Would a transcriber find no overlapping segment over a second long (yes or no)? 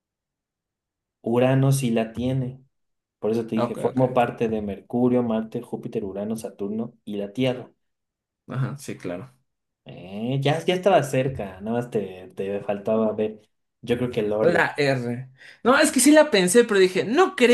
yes